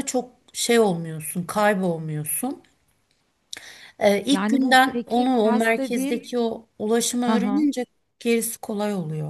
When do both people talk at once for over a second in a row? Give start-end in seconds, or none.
4.3-6.2